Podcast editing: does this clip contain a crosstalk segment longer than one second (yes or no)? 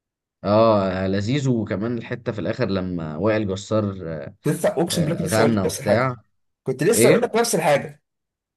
yes